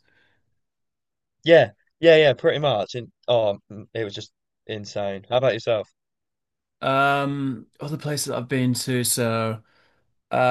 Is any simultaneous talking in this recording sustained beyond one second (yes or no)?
no